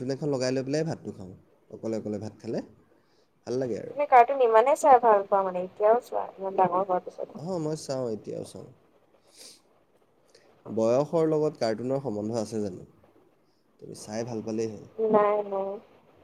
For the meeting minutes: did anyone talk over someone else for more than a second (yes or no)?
no